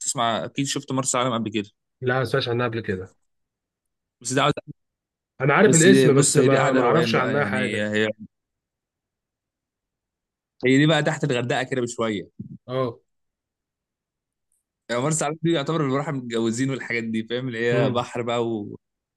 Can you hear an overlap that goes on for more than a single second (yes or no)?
yes